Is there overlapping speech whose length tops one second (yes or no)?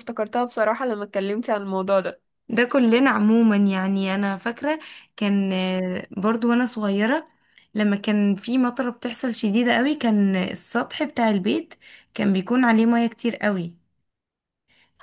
no